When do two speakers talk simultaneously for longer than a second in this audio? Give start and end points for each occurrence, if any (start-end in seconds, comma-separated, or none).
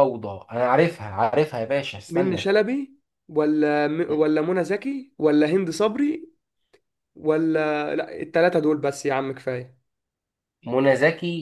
none